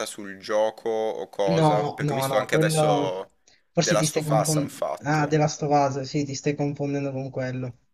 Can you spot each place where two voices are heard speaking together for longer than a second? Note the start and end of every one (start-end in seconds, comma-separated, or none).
1.6-3.1, 3.8-5.3